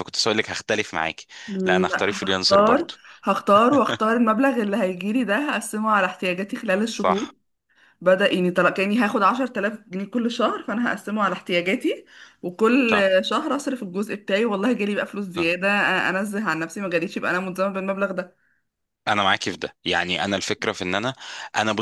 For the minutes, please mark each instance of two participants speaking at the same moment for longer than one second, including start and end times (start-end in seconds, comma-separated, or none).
1.6-2.9